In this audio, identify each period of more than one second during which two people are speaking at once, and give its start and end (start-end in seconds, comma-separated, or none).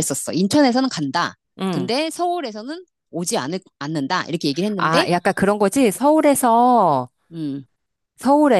none